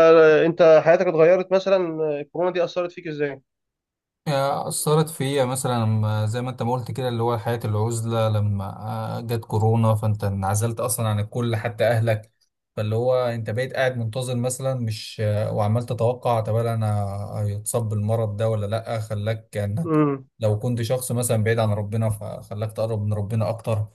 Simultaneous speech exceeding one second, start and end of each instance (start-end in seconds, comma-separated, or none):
none